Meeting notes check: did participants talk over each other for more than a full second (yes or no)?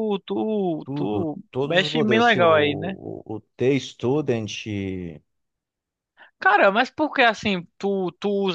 yes